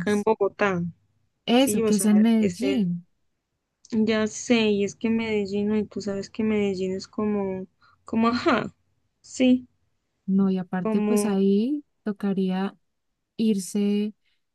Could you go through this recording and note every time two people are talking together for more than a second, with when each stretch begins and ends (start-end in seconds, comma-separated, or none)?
1.6-2.9